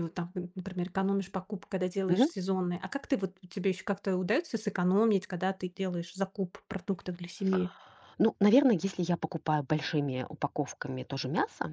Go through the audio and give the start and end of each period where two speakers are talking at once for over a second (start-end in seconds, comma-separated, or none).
none